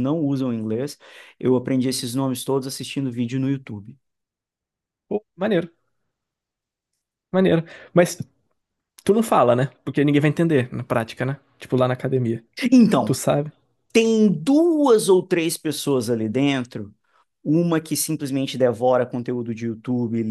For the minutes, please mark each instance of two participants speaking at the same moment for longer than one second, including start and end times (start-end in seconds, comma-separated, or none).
none